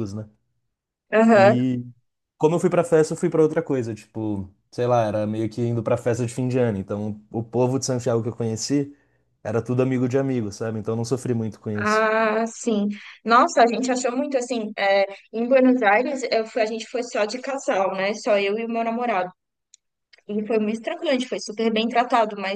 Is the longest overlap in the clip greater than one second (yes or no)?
no